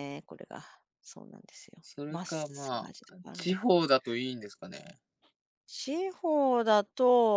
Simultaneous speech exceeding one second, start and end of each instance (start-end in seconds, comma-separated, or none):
1.8-3.8